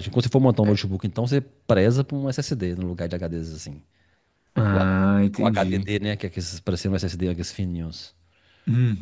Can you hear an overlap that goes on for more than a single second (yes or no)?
yes